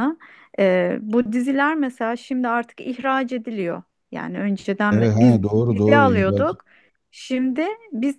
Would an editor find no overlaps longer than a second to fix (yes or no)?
no